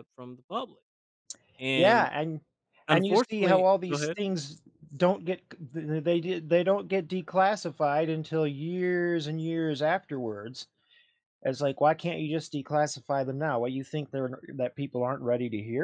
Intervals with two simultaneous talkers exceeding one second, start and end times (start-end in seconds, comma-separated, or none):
2.9-4.2